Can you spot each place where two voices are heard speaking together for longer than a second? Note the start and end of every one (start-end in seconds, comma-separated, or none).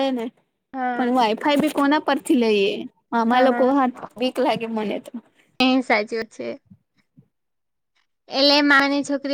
none